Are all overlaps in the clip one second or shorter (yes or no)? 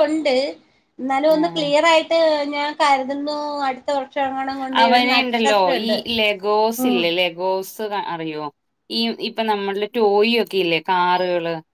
yes